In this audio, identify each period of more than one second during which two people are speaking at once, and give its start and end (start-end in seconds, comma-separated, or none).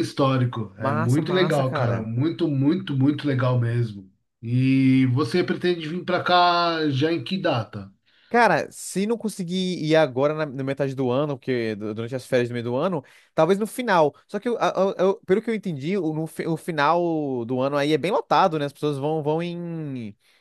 0.8-2.1